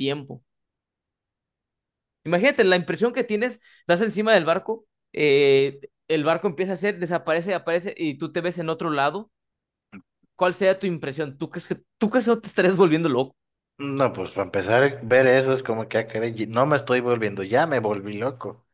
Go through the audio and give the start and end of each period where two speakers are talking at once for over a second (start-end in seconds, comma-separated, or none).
none